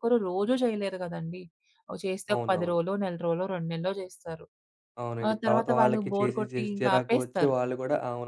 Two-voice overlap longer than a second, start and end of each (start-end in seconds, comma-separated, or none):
5.3-7.5